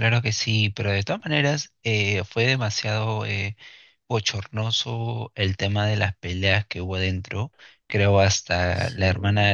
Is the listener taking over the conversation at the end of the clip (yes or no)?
no